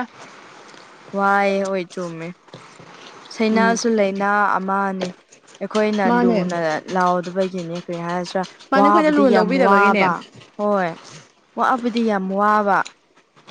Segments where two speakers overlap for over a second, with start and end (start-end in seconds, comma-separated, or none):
8.7-10.1